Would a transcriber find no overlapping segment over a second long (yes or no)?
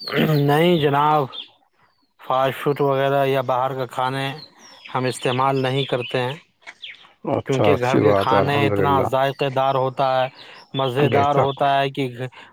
no